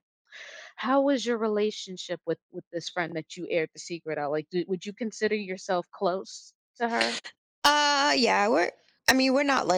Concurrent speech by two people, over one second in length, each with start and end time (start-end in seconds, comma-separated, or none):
none